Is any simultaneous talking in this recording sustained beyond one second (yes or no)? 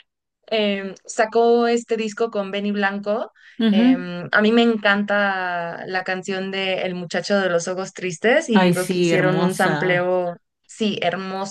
yes